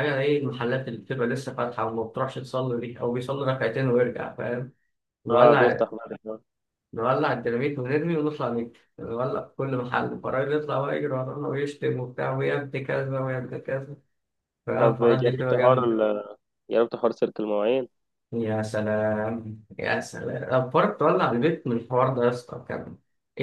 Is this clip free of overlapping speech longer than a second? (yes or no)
no